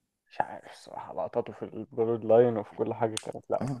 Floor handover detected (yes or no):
yes